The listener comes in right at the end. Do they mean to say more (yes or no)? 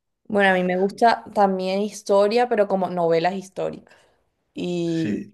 no